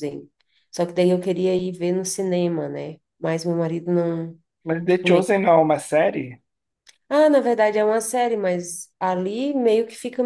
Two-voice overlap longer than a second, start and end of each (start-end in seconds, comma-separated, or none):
none